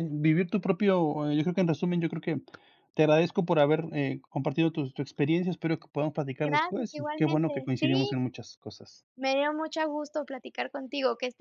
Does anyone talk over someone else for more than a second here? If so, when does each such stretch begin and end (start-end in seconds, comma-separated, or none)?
6.4-8.2